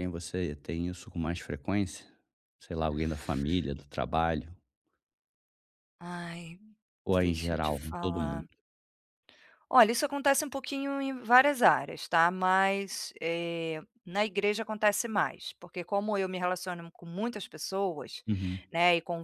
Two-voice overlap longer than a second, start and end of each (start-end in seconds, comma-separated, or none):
7.2-8.5